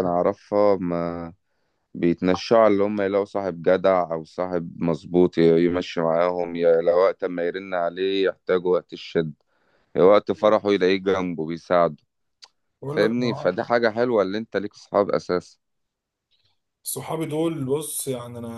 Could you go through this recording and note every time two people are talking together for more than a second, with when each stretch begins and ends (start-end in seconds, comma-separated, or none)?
none